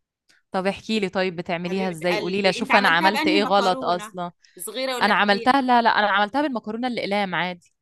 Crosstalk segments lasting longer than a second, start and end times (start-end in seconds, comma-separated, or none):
1.7-4.2